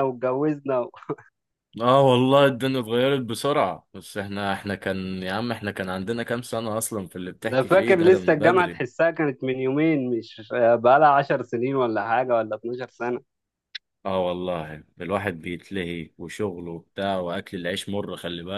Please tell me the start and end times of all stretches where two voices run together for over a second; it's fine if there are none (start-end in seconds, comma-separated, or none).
7.4-8.8